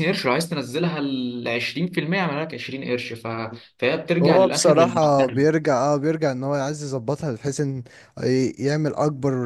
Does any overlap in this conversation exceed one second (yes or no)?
yes